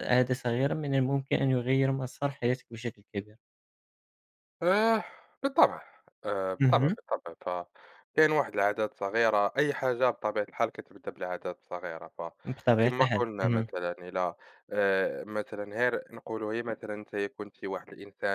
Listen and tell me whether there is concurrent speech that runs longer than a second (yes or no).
yes